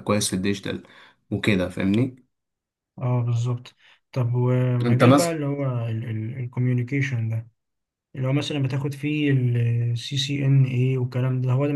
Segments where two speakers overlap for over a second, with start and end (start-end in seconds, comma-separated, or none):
none